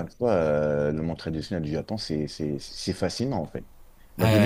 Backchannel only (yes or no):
yes